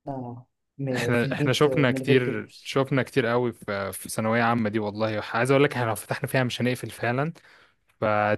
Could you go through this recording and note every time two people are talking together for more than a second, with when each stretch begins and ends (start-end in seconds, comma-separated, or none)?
0.9-2.8